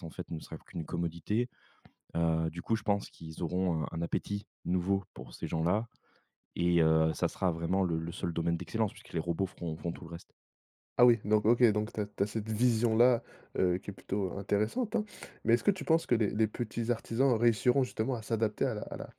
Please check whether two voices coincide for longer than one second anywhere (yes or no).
no